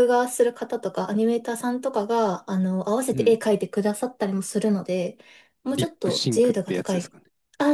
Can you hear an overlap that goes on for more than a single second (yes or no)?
yes